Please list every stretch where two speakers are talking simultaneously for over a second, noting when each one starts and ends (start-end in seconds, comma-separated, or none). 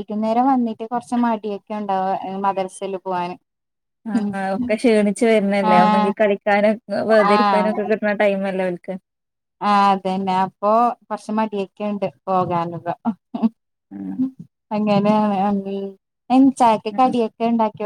none